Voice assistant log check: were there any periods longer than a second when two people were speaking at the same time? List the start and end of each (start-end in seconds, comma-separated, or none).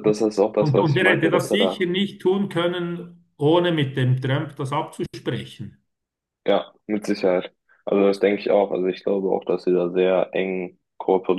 0.6-1.9